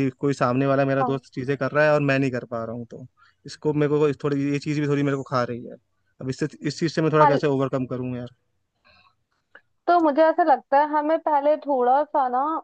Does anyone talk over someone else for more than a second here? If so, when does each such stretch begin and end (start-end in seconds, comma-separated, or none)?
none